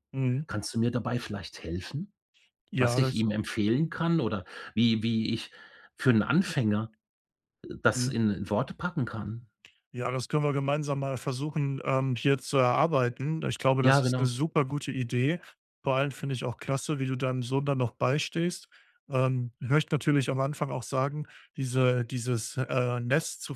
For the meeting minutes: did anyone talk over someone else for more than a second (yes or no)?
no